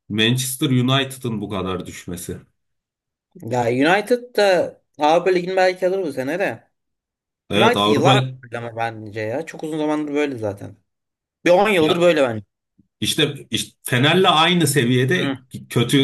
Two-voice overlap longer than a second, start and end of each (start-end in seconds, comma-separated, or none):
none